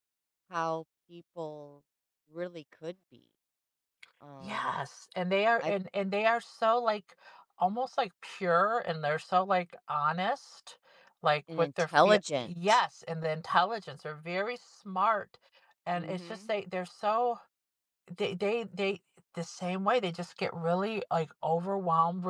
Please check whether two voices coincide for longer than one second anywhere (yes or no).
yes